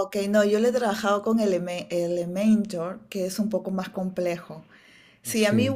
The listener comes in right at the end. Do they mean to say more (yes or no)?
no